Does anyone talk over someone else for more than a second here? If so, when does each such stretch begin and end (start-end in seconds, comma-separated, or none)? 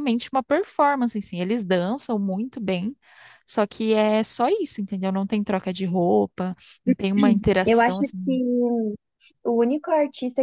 none